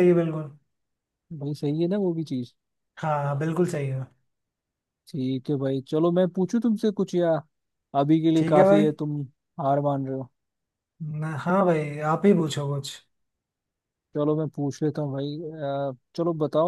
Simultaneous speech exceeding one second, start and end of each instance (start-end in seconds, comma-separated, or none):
none